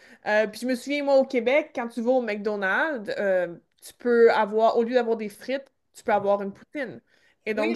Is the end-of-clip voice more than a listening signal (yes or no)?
yes